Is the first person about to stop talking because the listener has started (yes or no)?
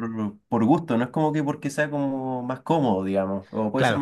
no